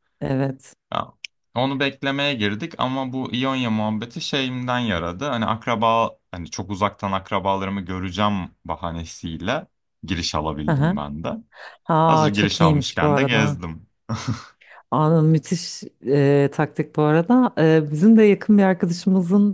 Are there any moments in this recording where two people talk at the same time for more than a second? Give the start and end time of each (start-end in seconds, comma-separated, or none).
12.1-13.6